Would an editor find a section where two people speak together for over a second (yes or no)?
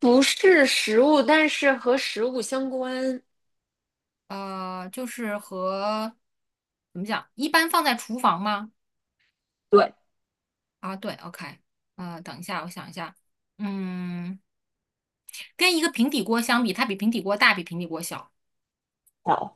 no